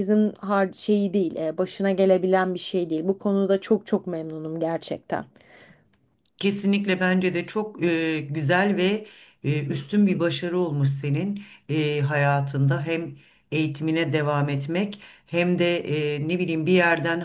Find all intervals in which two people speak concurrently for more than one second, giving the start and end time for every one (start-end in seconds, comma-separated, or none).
none